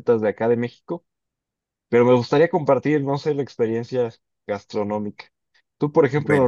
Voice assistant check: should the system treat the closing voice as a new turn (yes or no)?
no